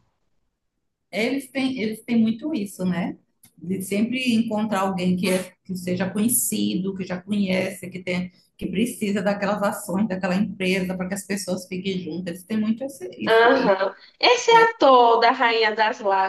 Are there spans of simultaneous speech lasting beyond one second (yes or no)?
no